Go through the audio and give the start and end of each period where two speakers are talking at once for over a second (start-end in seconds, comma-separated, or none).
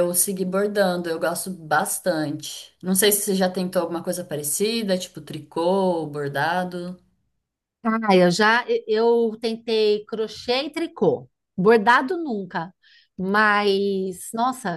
none